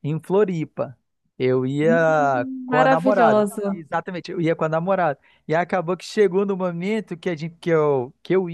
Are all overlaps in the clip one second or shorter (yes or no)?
no